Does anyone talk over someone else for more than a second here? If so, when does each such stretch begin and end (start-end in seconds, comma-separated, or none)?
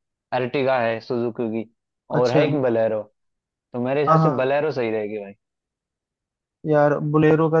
none